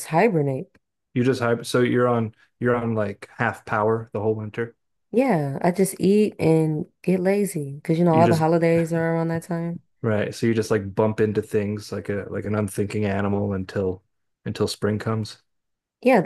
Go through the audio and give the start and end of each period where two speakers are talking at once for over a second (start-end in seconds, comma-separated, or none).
none